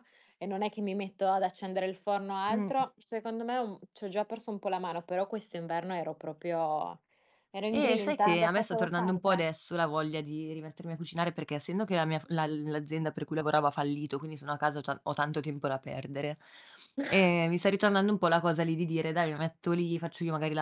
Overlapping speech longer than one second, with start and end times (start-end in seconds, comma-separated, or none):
7.7-9.4